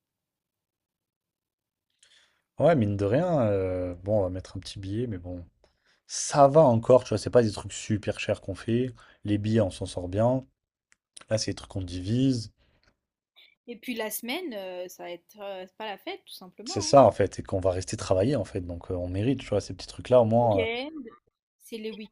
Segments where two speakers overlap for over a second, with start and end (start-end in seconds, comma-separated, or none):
none